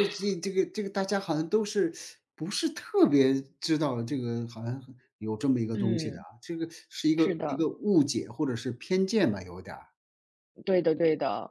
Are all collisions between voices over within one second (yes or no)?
yes